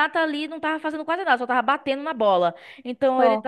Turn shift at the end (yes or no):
no